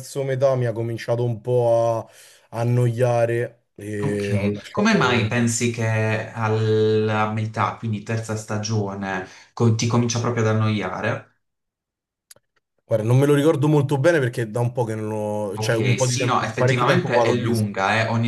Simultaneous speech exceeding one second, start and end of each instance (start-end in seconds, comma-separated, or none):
4.0-5.3, 15.6-17.7